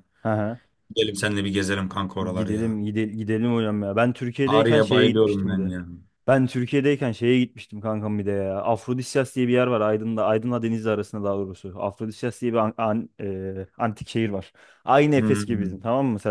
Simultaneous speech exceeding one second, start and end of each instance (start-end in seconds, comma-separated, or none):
4.5-5.7